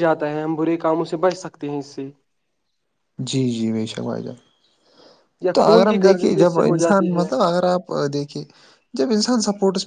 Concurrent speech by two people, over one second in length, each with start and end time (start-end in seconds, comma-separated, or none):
5.5-7.2